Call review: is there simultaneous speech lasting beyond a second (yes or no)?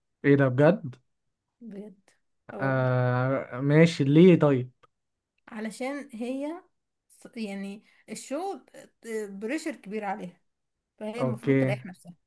no